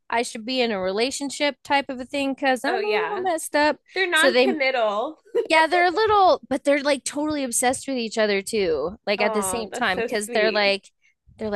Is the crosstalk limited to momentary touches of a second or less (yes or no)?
no